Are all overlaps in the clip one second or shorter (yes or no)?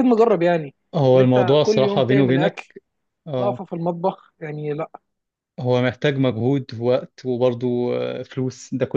no